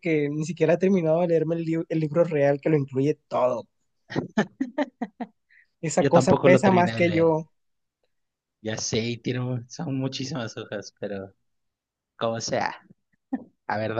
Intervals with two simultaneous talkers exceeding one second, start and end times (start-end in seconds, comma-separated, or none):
6.0-7.4